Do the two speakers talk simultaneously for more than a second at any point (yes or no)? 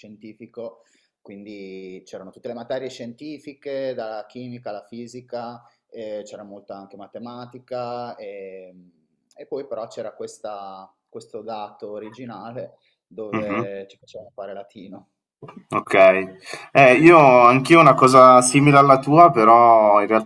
no